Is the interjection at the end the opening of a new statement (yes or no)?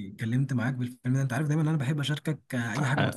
yes